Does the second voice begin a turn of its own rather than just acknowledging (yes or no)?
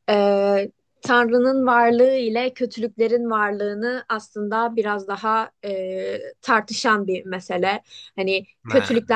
no